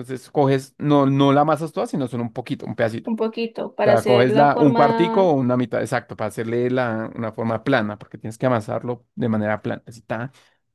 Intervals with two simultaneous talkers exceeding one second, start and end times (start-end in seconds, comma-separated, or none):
3.8-5.3